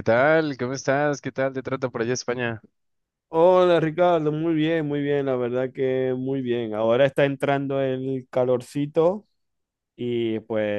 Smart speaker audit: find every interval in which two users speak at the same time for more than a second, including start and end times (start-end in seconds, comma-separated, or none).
none